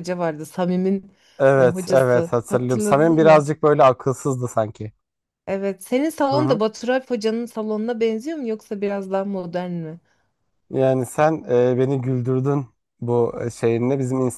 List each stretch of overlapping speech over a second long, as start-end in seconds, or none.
1.6-3.5